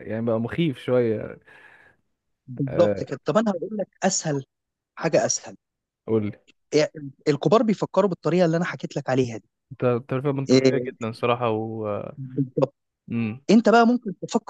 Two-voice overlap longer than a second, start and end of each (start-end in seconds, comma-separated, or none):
none